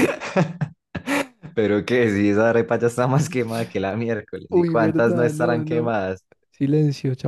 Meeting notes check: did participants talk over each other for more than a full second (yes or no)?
yes